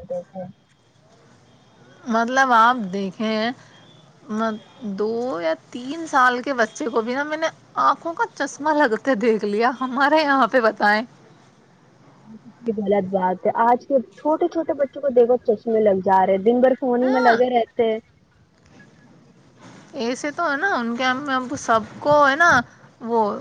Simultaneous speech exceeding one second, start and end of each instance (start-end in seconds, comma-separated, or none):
none